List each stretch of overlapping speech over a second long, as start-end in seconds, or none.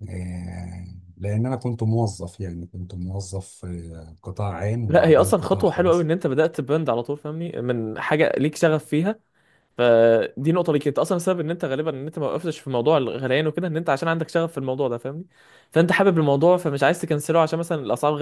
4.9-6.1